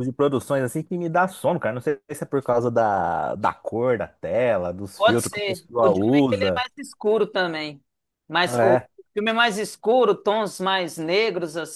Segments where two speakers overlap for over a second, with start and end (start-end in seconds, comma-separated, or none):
5.0-6.6